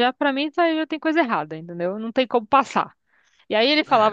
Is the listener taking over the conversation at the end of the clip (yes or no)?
no